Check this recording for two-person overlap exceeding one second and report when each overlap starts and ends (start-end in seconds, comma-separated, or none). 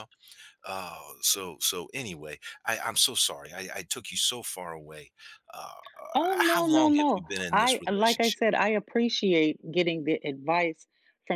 6.1-8.4